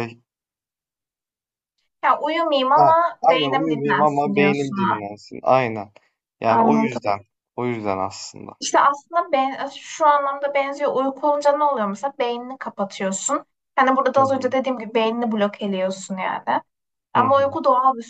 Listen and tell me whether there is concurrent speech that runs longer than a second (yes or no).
yes